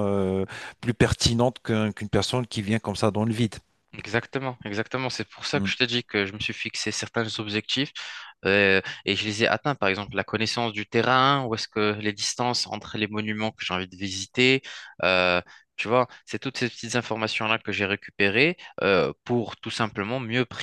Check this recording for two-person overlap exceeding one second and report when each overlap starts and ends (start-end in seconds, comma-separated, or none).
none